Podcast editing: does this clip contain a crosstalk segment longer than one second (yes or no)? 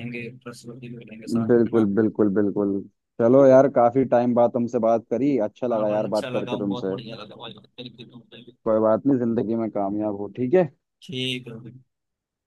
yes